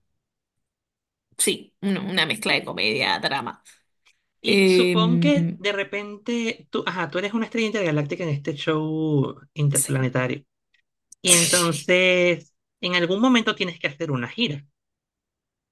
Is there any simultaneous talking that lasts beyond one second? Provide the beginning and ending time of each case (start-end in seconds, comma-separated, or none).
4.4-5.6